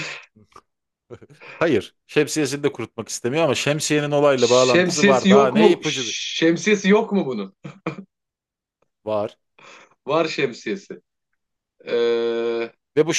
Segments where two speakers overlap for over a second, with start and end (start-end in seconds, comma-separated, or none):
4.3-6.2